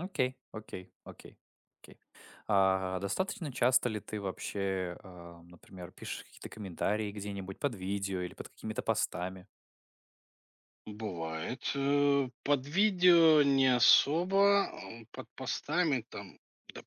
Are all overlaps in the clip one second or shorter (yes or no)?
yes